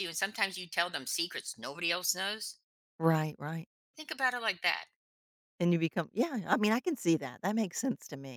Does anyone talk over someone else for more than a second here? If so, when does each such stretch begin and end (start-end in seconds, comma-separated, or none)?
none